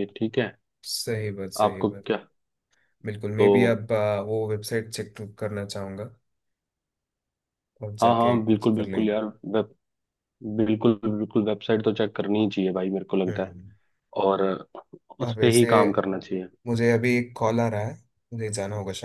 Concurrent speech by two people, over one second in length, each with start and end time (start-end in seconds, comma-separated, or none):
8.0-9.2